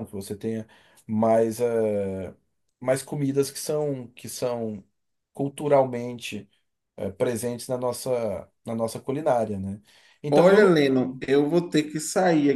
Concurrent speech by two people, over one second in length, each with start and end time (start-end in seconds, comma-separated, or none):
none